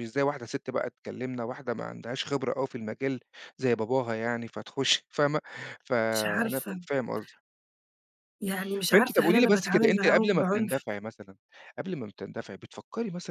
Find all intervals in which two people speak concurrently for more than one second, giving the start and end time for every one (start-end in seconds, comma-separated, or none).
8.9-10.8